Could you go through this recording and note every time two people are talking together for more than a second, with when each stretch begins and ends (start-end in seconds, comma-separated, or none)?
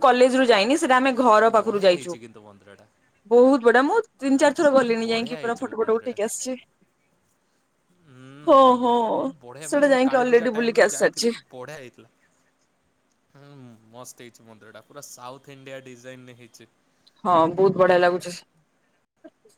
4.5-6.2, 9.7-11.3